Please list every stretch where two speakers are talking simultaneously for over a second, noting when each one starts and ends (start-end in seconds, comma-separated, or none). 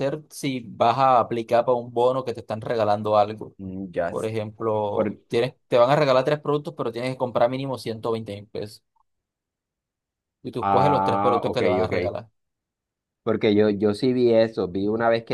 10.6-11.9